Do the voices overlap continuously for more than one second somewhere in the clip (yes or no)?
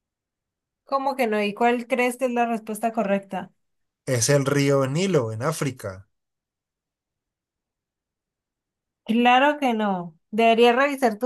no